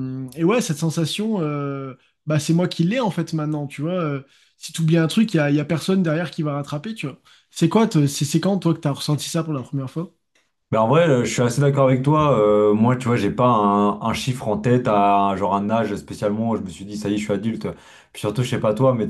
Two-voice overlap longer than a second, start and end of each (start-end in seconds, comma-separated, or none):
none